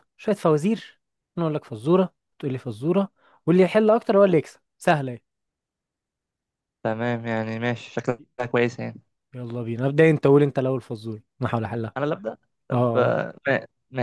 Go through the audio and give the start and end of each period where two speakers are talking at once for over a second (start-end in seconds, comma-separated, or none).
none